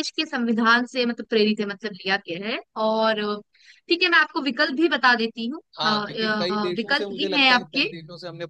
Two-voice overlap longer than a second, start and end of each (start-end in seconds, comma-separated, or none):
5.8-7.8